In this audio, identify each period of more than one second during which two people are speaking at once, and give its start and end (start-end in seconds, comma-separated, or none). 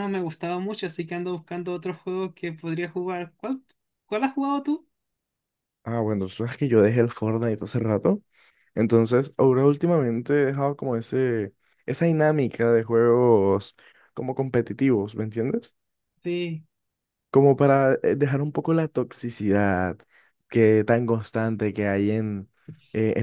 none